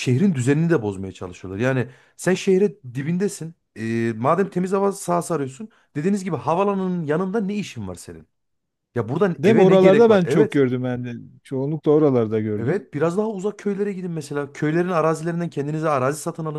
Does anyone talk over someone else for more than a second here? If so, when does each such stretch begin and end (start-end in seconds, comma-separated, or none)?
9.4-10.6